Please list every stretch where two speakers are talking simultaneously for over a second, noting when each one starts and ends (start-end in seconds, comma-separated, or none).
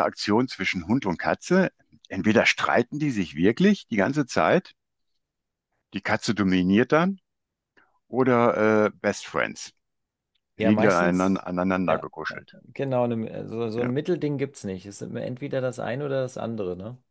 10.6-12.4